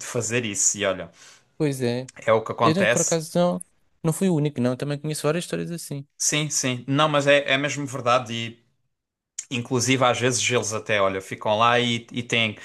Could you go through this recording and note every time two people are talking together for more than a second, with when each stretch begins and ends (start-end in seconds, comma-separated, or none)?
none